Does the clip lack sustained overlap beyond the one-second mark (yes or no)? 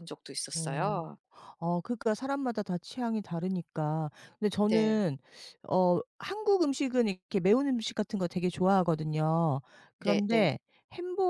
yes